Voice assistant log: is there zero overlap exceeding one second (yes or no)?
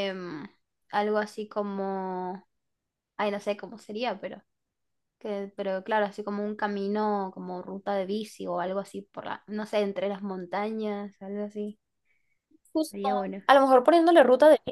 yes